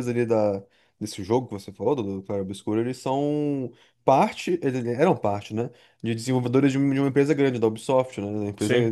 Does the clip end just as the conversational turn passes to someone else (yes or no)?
no